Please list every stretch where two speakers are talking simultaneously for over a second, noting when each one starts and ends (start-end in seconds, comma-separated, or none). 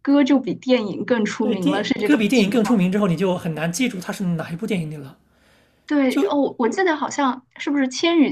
1.4-2.6